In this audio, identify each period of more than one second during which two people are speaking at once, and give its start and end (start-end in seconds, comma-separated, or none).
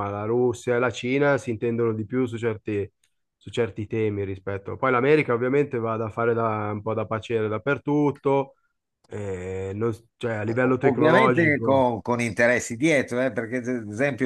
10.5-11.9